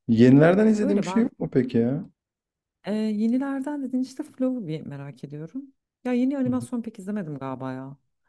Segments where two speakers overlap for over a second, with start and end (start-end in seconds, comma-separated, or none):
none